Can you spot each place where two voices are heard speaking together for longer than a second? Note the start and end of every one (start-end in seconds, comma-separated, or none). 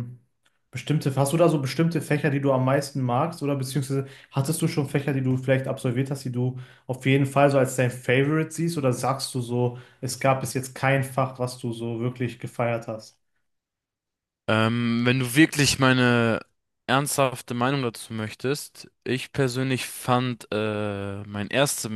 none